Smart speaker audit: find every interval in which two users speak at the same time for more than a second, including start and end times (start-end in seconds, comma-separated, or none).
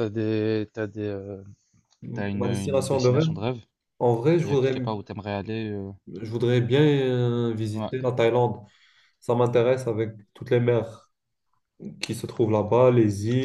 2.1-3.3